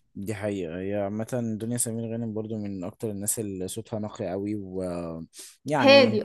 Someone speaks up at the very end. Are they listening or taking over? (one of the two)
taking over